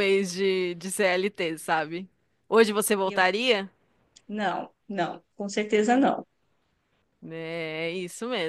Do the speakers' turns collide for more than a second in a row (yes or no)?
no